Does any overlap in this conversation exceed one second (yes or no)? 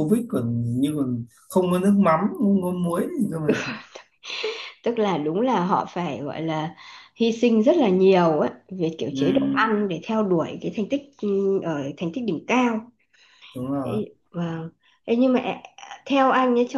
no